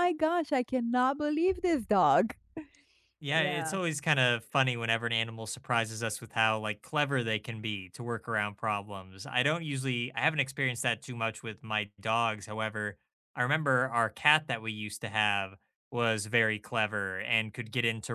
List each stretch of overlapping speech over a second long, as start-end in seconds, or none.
none